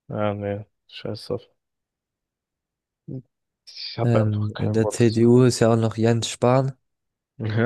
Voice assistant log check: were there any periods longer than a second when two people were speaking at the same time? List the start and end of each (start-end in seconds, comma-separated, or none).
4.0-5.3